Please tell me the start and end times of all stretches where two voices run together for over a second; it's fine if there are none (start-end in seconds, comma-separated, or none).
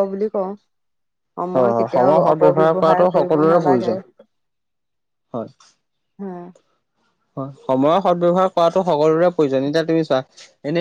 1.5-3.9